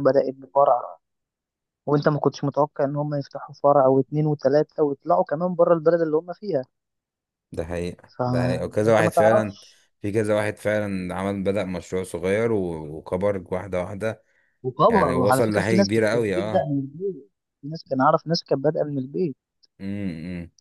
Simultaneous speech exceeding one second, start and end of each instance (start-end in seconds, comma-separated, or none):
8.2-9.6, 14.9-16.7